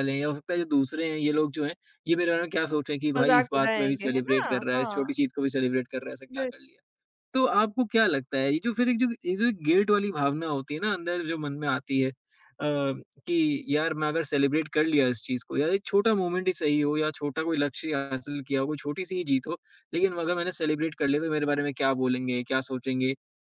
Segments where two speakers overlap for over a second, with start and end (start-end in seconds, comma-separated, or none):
3.2-5.1